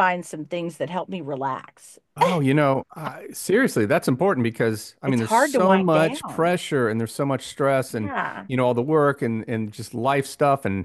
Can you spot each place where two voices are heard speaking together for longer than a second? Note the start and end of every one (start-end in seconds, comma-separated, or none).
5.0-6.6